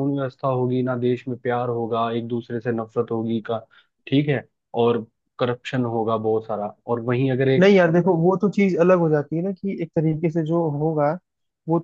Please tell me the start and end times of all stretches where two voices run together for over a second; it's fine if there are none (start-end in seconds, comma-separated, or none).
none